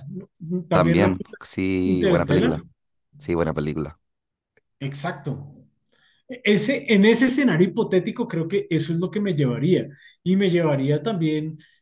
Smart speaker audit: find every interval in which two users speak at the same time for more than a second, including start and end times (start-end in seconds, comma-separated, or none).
0.7-2.5